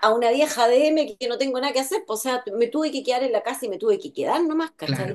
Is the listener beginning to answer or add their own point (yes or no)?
no